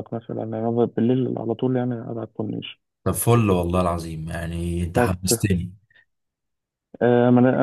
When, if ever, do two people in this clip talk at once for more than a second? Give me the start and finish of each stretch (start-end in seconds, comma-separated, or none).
none